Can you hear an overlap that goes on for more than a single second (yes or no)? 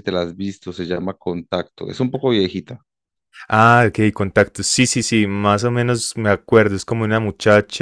no